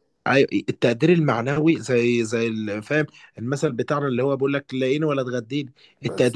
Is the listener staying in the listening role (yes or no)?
yes